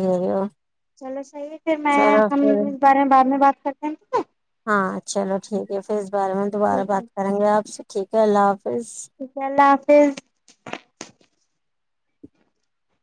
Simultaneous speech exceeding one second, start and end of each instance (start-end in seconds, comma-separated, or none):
none